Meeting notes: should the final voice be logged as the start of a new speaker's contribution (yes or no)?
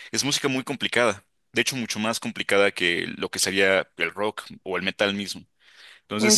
no